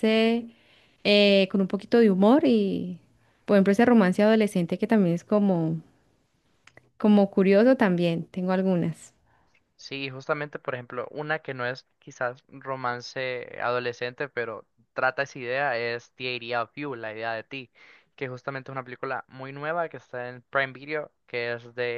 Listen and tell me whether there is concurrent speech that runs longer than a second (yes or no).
no